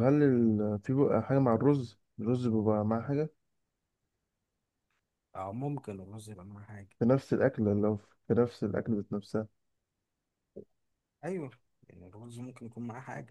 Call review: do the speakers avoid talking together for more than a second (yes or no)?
yes